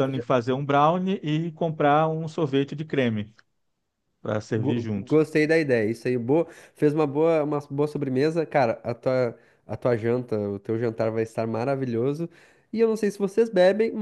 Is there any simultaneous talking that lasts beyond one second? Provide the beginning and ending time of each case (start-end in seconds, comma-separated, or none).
none